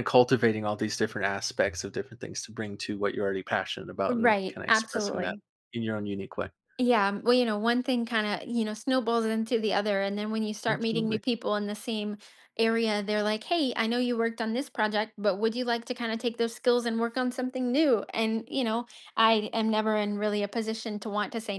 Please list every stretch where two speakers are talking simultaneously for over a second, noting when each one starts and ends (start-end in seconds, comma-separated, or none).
4.1-5.3